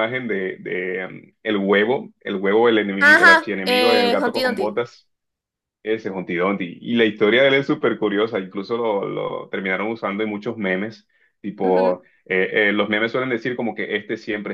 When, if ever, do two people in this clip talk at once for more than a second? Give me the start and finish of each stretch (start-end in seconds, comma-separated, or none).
3.0-4.8